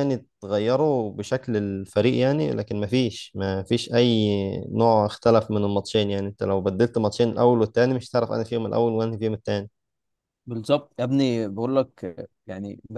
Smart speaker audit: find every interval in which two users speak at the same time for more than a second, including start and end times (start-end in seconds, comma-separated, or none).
none